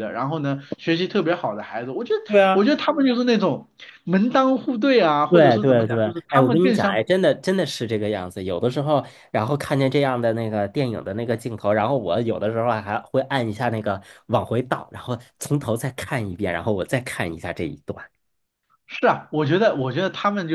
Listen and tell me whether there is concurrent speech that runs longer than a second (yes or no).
yes